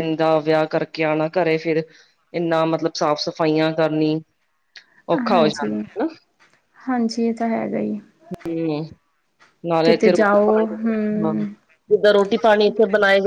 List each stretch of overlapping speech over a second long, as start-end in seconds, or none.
9.8-11.3